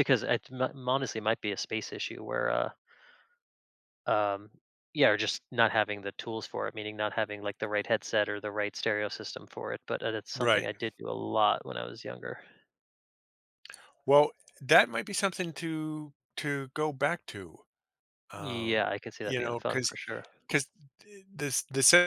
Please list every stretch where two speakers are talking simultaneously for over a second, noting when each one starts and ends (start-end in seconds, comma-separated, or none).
18.4-19.9